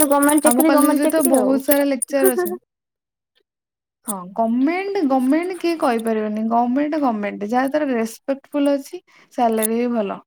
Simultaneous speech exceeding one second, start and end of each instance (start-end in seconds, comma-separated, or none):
0.5-2.5